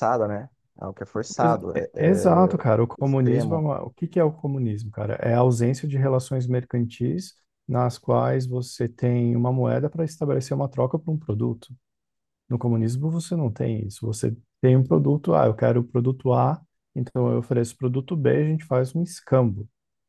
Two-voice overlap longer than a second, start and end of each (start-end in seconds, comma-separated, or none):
1.7-3.7